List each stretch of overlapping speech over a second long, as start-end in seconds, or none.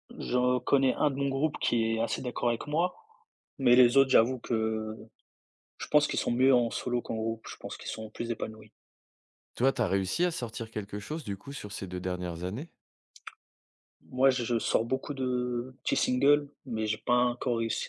none